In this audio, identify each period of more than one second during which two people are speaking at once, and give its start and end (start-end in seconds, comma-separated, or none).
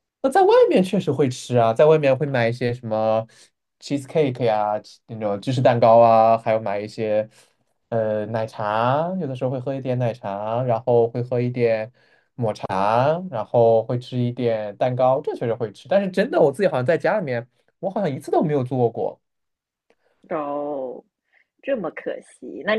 none